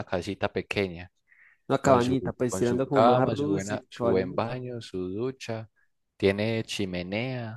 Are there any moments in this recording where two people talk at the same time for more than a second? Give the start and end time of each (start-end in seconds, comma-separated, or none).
1.8-4.6